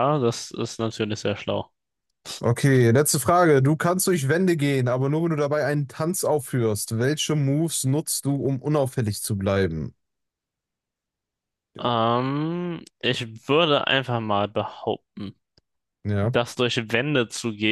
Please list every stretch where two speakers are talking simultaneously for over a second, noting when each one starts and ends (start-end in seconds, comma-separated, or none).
none